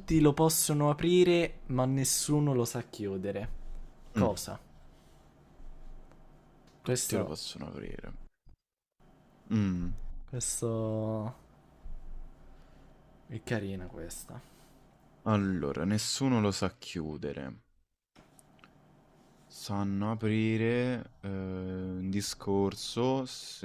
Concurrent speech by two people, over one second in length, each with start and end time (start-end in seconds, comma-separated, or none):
none